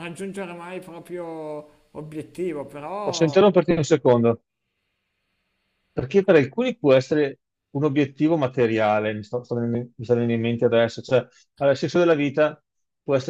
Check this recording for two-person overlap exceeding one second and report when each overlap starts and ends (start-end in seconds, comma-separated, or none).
none